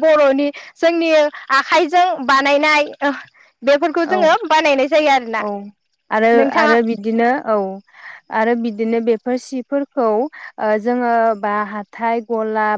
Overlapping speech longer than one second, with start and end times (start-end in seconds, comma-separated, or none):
none